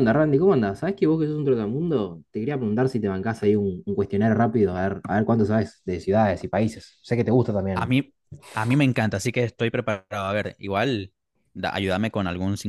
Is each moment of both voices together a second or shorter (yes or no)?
yes